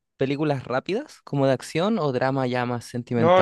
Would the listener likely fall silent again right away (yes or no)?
no